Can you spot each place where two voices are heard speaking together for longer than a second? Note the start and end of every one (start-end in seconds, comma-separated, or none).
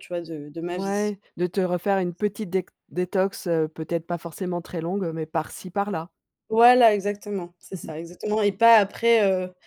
none